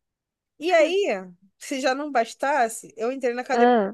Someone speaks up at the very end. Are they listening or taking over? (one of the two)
listening